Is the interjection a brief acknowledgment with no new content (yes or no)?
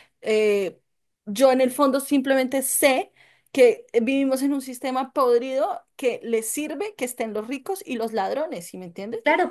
no